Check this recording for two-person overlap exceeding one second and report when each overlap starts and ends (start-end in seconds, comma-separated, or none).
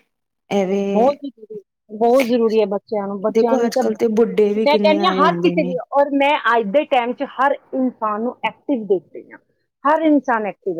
3.4-5.8